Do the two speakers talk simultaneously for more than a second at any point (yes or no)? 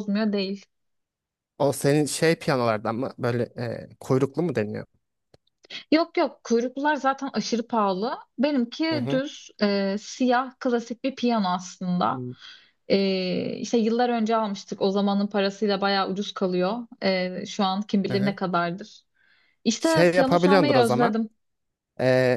yes